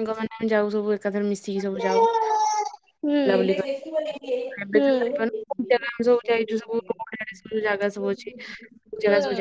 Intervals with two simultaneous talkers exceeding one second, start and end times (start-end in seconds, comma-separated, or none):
1.8-3.2